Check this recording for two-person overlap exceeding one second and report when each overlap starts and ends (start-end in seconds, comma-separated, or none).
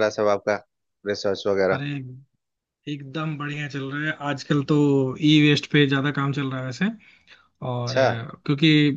none